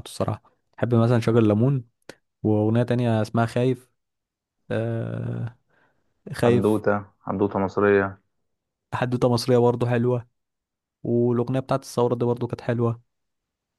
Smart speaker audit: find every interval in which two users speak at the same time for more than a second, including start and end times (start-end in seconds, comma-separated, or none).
none